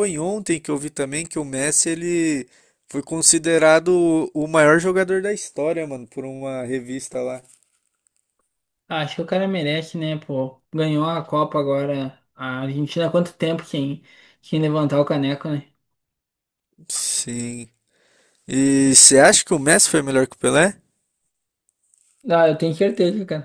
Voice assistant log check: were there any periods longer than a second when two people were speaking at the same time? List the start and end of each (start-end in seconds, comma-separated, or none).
none